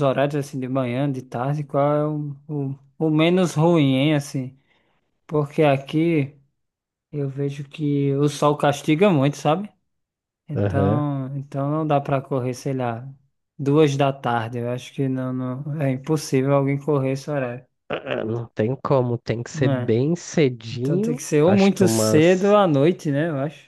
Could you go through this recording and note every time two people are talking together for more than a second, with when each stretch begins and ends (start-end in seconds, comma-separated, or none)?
20.7-22.6